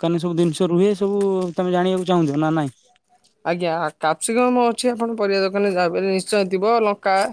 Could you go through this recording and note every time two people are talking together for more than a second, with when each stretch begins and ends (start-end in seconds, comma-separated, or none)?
none